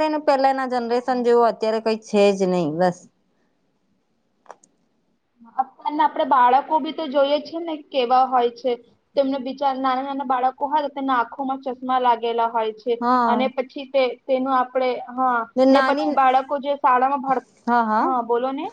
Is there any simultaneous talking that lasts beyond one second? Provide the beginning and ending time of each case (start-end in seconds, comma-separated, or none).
none